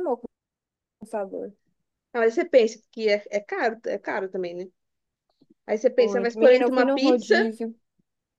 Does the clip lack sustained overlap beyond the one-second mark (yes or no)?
no